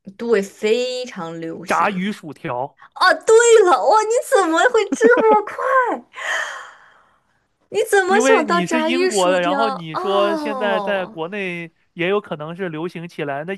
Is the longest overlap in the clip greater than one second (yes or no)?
yes